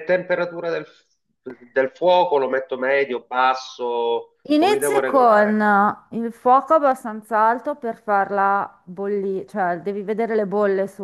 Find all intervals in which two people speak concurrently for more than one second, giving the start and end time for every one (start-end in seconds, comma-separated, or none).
4.5-5.7